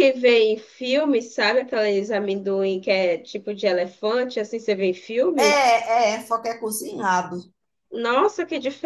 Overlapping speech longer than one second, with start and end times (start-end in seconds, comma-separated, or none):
none